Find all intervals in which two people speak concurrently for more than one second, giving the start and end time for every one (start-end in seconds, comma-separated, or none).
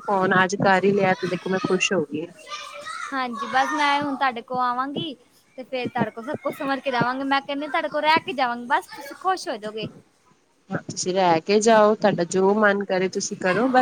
none